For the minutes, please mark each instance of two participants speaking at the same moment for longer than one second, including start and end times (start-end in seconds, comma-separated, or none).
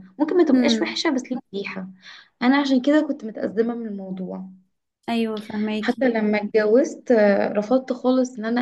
none